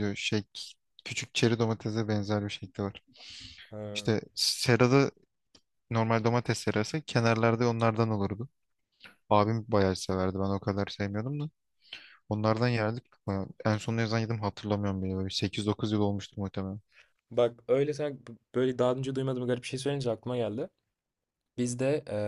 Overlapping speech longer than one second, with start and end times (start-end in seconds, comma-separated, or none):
none